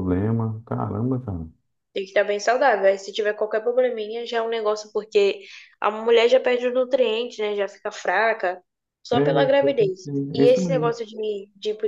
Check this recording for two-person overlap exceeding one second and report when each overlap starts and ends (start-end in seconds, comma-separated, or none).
9.1-10.9